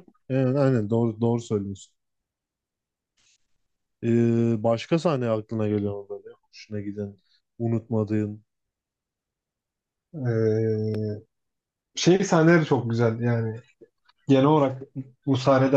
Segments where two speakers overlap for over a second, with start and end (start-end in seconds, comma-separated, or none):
none